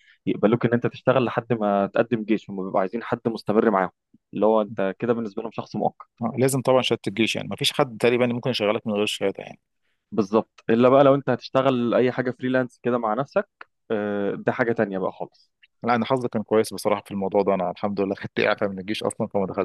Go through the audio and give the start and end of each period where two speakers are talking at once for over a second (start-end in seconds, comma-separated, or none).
none